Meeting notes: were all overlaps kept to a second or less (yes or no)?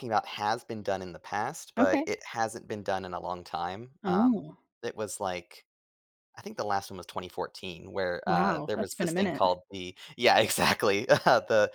no